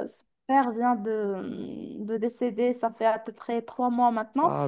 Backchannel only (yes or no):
yes